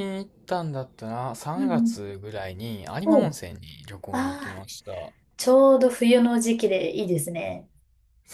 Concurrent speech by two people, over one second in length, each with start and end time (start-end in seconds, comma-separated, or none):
none